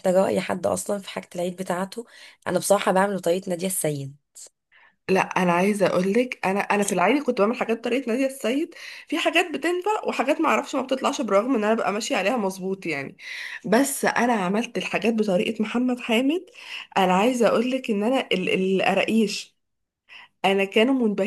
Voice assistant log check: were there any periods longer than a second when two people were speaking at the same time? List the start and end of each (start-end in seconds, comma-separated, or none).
none